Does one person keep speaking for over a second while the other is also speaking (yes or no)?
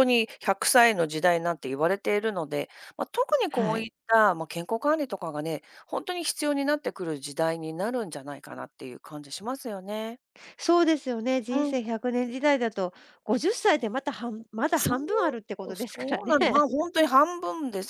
yes